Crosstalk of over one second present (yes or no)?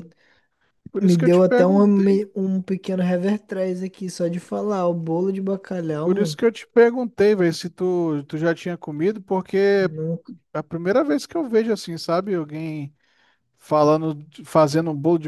yes